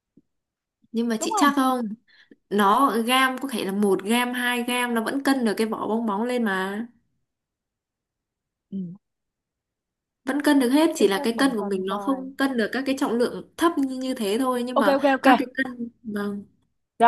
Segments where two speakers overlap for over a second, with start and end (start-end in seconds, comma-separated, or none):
11.0-12.3